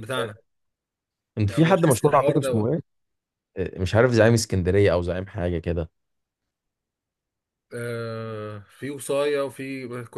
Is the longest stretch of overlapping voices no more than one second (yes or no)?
no